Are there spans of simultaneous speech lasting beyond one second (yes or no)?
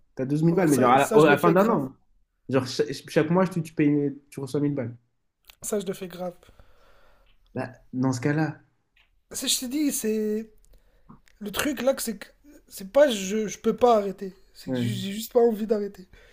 yes